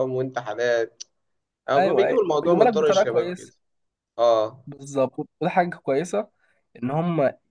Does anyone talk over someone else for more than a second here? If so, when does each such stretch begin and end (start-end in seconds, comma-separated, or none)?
1.8-3.5